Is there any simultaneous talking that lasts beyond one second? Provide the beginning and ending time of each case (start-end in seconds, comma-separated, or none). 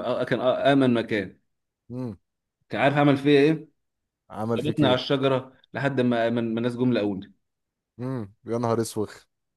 none